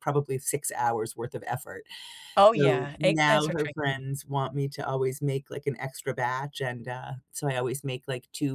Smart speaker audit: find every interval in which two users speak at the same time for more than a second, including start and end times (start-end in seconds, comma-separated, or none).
2.5-4.0